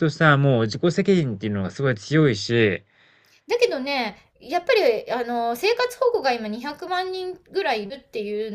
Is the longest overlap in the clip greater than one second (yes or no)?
no